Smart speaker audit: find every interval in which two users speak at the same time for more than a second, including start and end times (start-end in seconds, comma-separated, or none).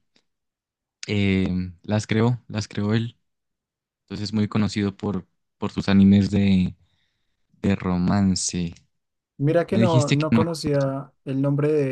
9.7-10.9